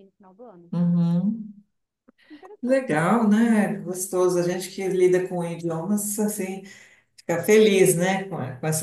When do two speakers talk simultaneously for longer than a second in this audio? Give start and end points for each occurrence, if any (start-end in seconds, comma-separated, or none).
none